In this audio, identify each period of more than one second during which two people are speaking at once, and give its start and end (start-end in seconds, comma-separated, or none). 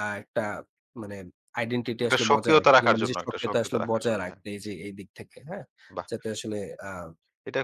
2.0-4.4